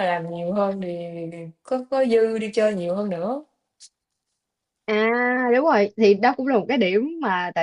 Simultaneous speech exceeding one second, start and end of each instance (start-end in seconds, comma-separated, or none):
none